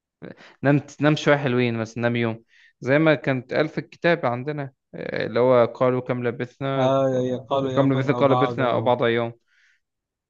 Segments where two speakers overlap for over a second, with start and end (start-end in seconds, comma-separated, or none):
7.6-8.9